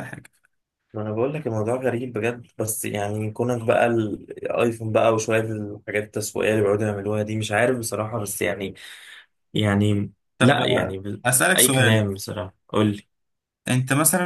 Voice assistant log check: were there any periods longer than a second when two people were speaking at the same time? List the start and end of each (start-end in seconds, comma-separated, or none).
10.4-12.0